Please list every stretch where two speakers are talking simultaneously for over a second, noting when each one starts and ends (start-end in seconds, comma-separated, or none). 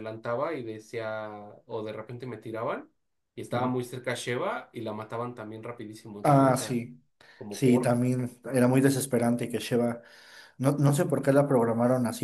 none